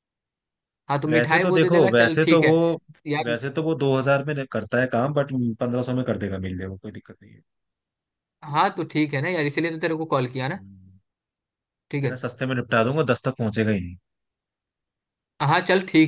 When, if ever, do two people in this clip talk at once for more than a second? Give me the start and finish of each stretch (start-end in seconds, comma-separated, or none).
1.1-2.5